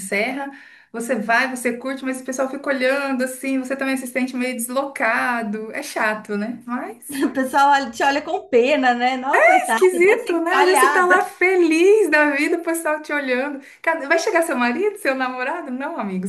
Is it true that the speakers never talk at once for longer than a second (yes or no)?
no